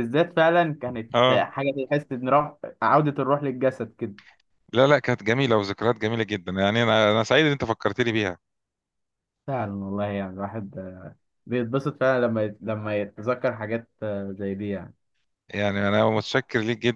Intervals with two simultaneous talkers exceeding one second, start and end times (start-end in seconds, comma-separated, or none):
none